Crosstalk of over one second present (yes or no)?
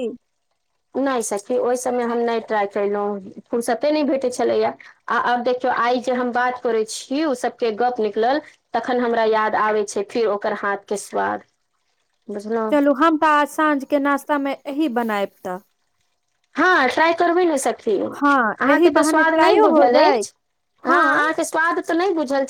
yes